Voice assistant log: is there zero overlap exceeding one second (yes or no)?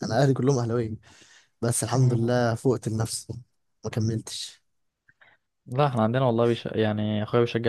yes